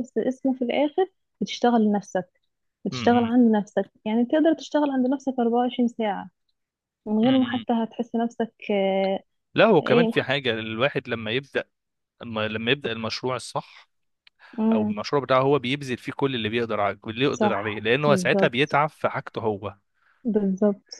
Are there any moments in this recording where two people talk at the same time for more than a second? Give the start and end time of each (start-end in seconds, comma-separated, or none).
17.3-18.8